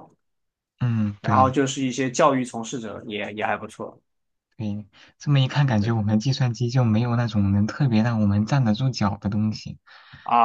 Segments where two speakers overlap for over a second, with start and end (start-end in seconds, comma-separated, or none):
none